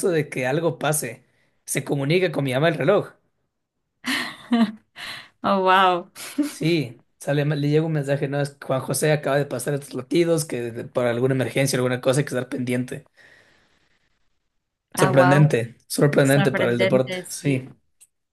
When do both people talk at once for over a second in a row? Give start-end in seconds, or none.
16.2-17.6